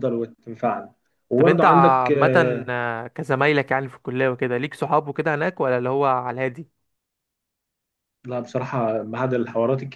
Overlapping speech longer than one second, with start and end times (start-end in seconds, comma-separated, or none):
1.3-2.7